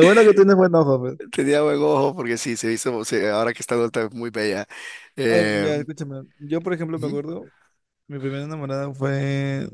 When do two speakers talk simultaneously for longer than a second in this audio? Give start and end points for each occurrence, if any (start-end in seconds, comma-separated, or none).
none